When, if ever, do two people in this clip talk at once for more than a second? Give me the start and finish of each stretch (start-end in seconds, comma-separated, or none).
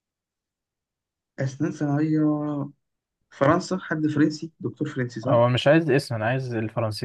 none